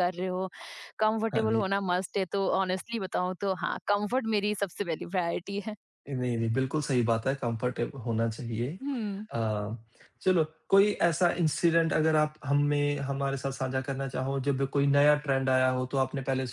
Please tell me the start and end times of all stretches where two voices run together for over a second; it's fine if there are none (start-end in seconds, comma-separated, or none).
none